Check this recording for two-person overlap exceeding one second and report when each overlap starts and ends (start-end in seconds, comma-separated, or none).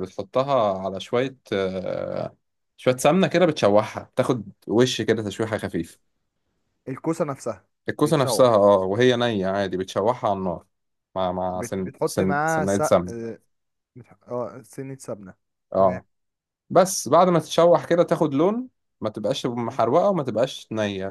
11.6-12.9